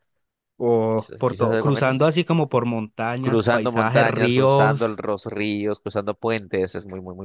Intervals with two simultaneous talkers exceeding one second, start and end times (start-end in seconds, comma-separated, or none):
0.9-2.2, 3.2-4.8